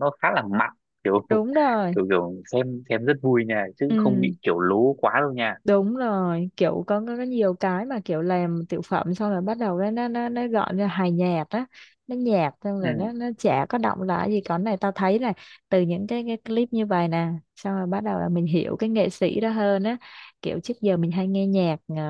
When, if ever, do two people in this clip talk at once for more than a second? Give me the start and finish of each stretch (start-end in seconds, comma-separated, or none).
none